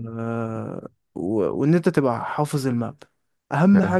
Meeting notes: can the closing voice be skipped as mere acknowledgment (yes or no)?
yes